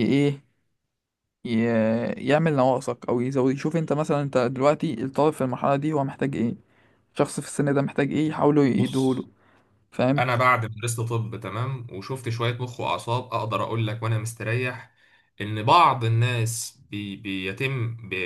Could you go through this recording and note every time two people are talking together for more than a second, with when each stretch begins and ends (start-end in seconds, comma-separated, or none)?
none